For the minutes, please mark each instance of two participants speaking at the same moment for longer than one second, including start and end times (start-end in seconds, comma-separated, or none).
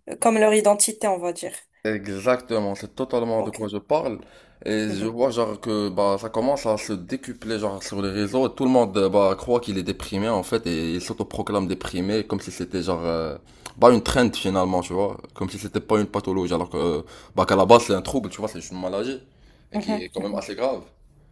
none